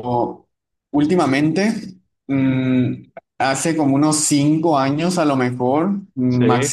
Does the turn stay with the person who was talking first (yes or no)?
yes